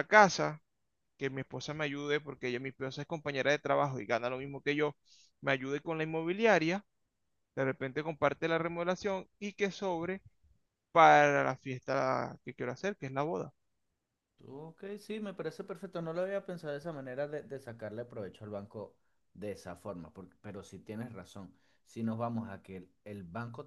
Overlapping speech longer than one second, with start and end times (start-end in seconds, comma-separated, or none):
none